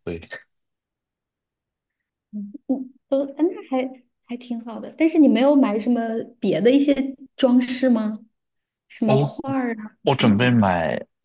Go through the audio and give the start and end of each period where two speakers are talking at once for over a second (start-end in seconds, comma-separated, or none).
none